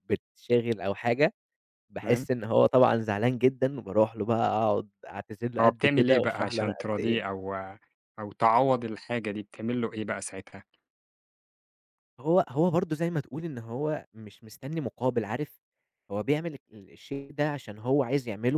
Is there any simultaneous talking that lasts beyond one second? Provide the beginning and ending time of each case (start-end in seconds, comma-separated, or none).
5.6-7.2